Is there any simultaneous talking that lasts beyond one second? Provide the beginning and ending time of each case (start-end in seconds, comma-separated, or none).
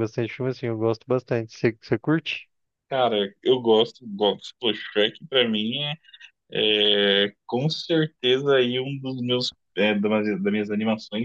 none